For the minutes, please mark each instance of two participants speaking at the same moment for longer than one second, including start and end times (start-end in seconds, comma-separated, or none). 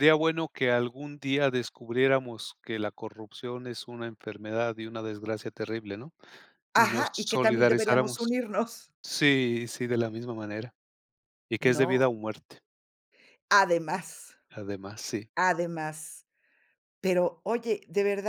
6.8-8.3